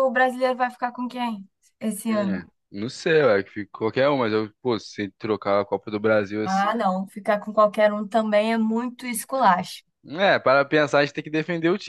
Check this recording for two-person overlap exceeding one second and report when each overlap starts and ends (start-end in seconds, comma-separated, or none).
none